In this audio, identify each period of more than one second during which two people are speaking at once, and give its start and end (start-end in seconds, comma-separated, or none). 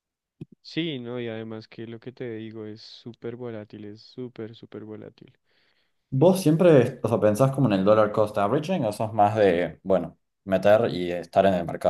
none